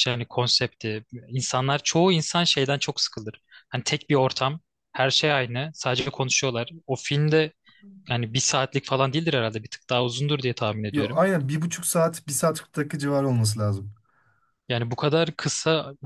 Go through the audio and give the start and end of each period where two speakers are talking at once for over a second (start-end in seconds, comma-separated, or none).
none